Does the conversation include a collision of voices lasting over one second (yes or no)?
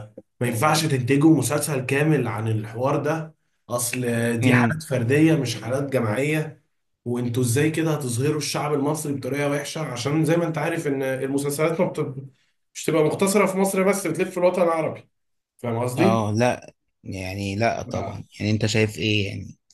no